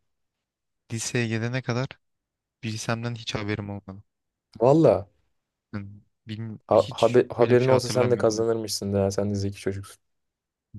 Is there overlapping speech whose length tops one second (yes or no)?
yes